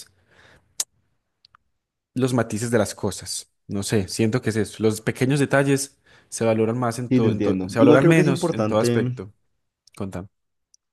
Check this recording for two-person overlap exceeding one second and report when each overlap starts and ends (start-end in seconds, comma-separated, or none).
7.1-9.0